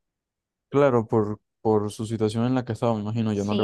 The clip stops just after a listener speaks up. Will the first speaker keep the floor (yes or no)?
no